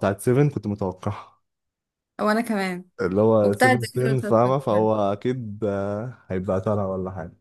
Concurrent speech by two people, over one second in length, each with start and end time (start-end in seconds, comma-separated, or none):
3.4-4.9